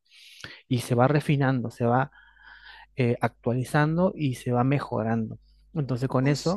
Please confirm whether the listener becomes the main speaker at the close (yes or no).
no